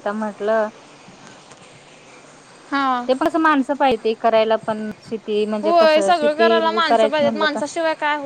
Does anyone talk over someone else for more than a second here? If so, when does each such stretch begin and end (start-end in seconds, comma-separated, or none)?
5.6-7.6